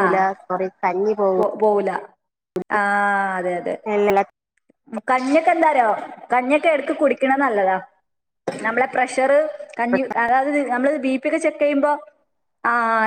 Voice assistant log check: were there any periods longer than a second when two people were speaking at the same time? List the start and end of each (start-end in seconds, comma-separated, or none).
none